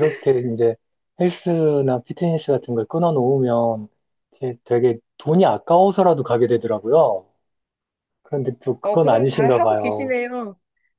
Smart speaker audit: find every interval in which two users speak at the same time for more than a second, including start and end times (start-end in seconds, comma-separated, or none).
8.8-10.2